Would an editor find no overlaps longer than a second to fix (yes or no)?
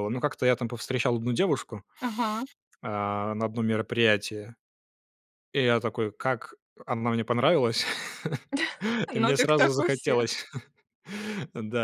no